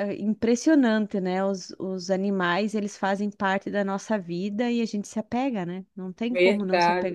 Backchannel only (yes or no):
no